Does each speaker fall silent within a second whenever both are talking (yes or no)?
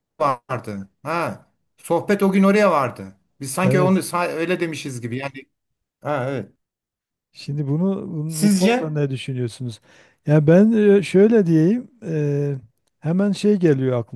yes